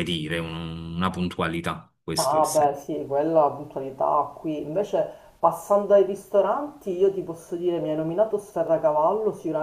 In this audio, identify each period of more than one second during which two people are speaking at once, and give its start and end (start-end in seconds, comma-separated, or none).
none